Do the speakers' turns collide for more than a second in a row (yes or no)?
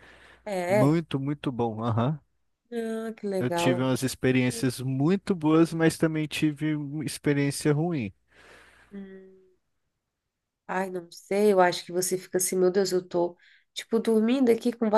no